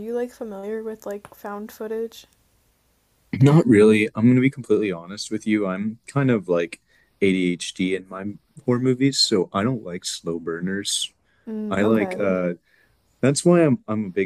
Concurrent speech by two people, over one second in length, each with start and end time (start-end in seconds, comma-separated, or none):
none